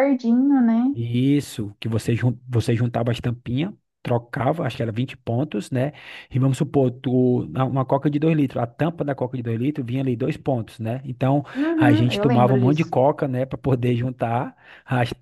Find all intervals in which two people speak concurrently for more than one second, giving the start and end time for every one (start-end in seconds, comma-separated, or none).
11.6-12.9